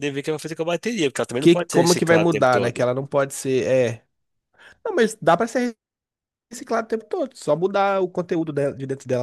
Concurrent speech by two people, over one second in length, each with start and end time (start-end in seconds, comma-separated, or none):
1.4-2.9